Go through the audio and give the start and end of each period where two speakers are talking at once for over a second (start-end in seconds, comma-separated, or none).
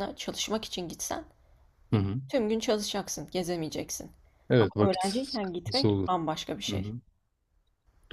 4.6-6.1